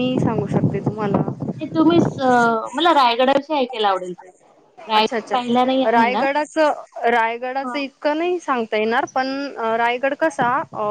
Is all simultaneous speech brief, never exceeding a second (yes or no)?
no